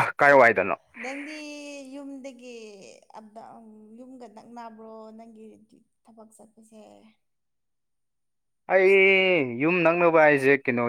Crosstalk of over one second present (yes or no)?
no